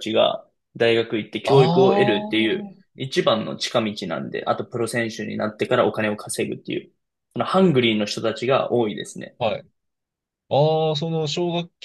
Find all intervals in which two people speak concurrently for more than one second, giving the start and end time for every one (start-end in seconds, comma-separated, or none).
1.5-3.0